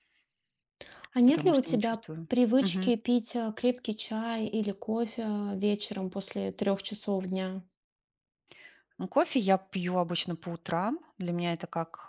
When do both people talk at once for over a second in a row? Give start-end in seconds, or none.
1.2-2.9